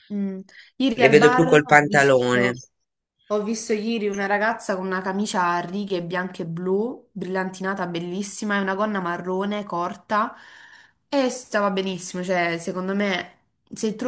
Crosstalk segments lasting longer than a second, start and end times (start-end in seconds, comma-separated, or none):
1.0-2.5